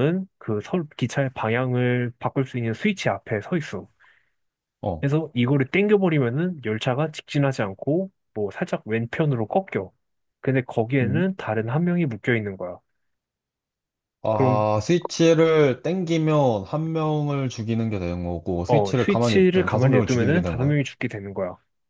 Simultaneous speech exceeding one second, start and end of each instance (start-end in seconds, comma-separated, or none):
18.6-20.8